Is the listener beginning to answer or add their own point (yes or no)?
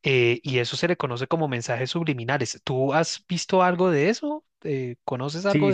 yes